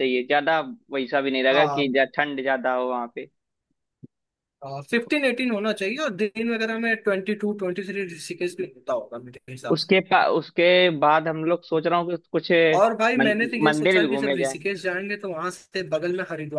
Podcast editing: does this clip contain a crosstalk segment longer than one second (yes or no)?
yes